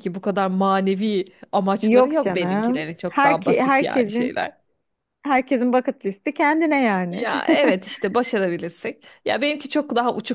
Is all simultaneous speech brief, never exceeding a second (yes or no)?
no